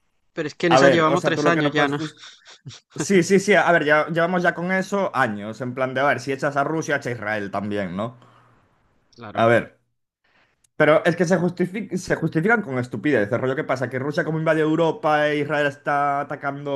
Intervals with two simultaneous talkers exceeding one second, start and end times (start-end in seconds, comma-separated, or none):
0.7-2.0